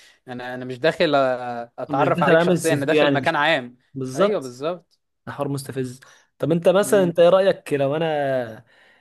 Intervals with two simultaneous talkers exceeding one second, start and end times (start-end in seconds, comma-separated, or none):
1.9-3.4